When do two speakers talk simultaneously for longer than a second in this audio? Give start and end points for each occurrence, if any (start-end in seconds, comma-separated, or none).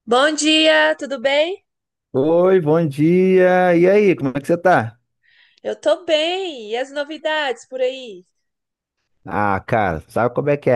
none